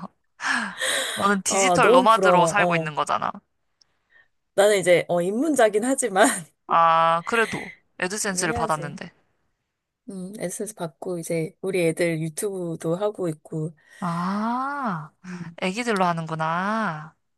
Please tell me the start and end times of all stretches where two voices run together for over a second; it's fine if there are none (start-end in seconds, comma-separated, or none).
1.5-2.9